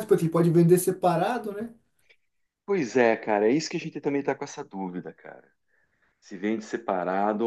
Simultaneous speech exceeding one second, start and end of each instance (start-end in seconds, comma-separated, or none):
none